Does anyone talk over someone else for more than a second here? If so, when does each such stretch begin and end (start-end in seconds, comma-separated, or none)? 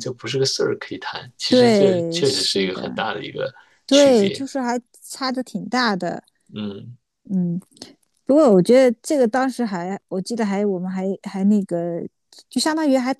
1.5-2.9